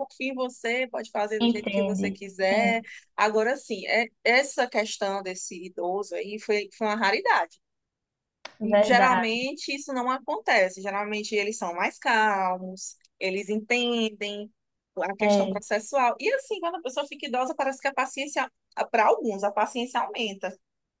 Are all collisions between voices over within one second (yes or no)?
no